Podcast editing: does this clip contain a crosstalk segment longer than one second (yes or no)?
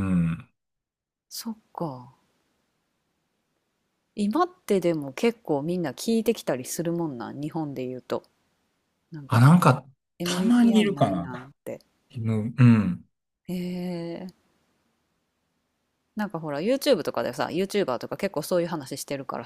yes